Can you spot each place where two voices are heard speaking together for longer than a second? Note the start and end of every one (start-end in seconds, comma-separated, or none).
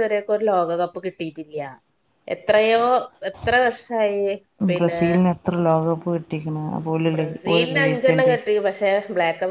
none